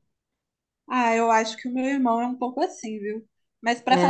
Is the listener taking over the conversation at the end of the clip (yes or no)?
no